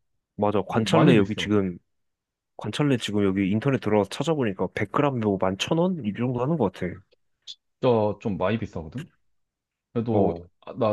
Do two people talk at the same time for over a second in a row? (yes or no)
no